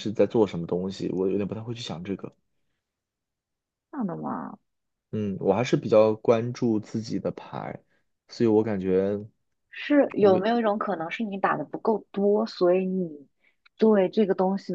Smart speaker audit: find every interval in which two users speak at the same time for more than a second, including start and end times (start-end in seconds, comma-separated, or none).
none